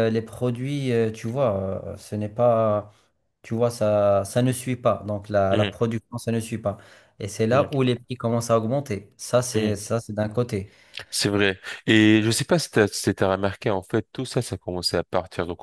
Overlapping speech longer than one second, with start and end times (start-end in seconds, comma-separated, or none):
none